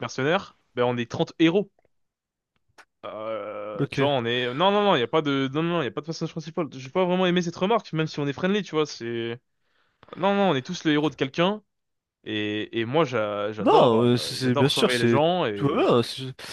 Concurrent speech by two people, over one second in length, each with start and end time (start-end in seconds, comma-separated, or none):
13.6-15.9